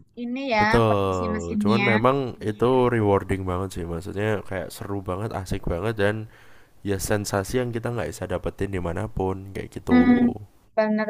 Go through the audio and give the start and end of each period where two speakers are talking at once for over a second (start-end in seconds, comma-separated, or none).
0.6-2.0